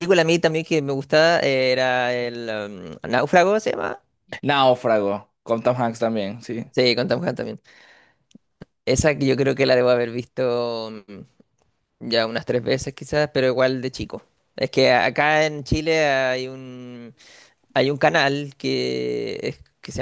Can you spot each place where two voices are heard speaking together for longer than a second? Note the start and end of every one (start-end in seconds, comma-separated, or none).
none